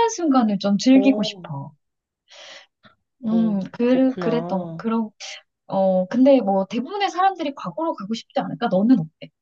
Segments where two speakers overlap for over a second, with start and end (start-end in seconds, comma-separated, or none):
3.3-4.8